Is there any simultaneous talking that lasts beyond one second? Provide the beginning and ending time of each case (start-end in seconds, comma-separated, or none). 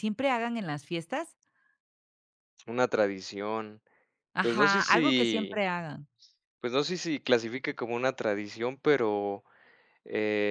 4.4-5.6